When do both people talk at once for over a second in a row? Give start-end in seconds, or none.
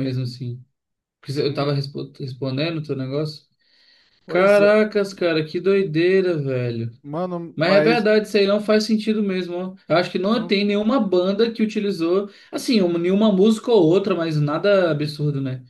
none